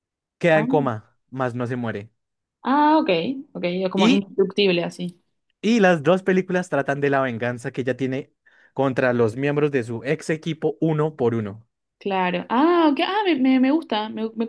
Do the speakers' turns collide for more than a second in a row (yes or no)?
no